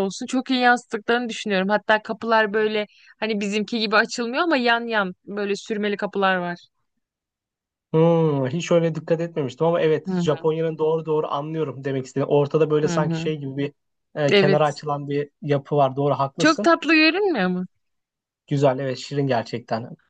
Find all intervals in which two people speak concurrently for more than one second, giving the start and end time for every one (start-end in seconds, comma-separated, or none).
none